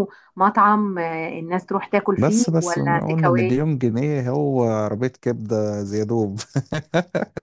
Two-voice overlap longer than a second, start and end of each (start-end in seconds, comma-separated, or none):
2.2-3.6